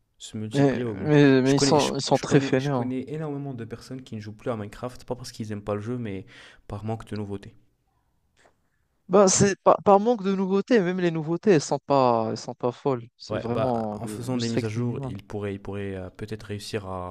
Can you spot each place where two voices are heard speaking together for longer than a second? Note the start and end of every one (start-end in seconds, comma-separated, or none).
0.5-2.9, 13.3-15.2